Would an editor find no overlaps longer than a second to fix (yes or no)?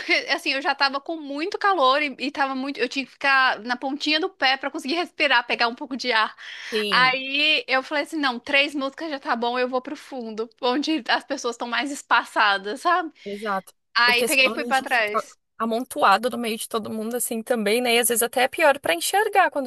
no